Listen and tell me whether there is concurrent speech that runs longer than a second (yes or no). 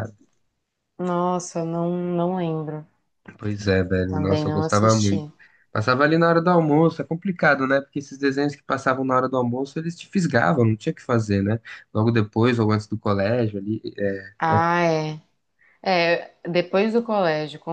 yes